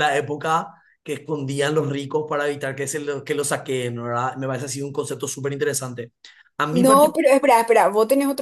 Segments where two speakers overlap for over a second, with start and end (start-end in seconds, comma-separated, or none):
none